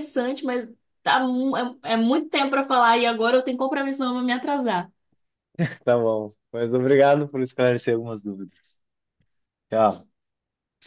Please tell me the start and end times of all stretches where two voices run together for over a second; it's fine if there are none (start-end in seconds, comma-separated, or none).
none